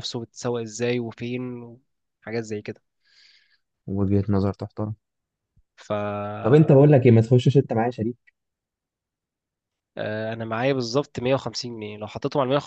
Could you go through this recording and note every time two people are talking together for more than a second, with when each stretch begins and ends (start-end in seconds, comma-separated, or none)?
none